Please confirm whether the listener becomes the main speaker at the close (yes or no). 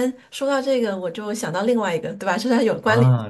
yes